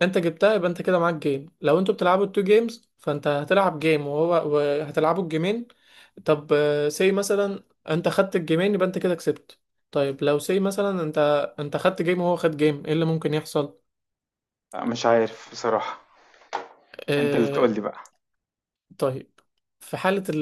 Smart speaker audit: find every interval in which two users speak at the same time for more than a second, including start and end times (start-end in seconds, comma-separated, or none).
none